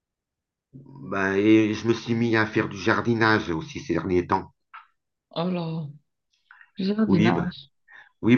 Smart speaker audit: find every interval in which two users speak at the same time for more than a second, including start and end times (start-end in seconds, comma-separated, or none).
none